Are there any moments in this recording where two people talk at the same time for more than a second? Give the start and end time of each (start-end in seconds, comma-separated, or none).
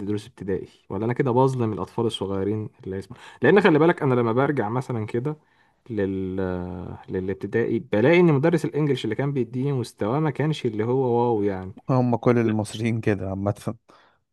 none